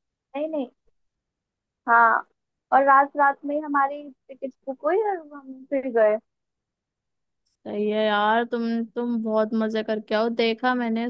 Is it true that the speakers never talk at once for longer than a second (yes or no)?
yes